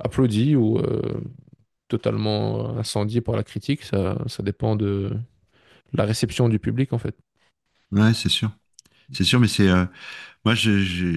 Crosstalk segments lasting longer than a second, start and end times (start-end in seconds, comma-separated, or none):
none